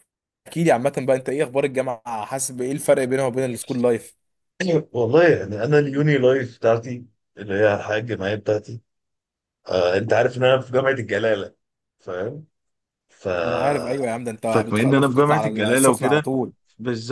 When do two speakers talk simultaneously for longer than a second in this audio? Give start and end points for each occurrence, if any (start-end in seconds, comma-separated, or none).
14.4-16.2